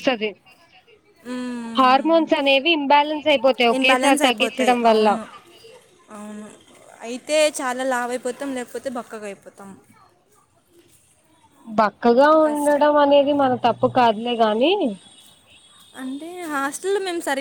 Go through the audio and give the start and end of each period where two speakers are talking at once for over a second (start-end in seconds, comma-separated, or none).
3.8-5.1